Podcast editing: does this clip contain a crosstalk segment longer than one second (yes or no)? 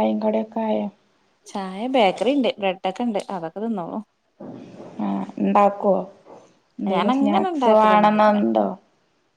yes